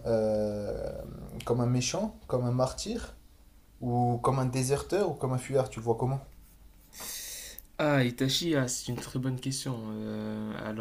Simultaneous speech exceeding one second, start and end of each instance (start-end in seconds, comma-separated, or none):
none